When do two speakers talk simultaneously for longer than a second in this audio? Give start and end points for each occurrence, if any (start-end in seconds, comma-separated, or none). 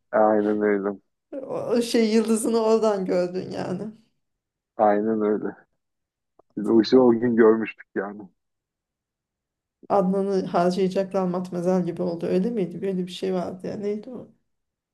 none